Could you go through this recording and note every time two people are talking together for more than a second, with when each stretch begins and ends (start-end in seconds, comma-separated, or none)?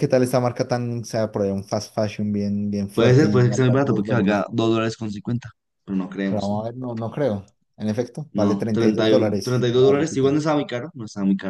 2.9-4.5, 8.3-10.4